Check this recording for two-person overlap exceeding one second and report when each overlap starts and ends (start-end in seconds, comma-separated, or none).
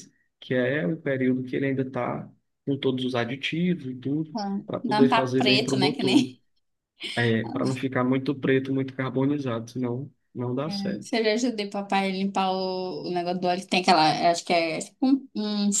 4.4-6.2